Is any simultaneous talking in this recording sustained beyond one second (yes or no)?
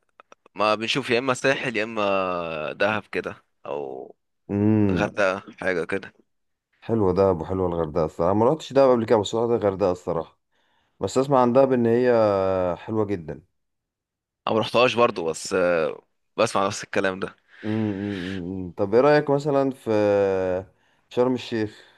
no